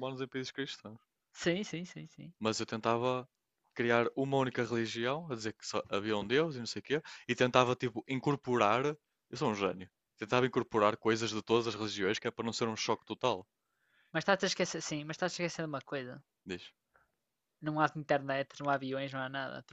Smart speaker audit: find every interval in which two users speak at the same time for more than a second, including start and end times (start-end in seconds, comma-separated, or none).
none